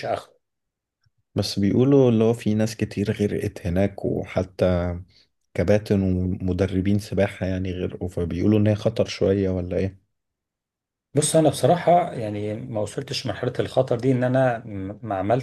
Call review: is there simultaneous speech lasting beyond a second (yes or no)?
no